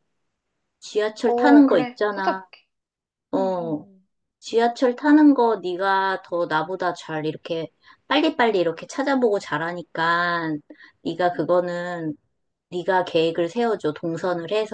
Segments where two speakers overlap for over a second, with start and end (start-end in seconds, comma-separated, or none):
1.2-2.5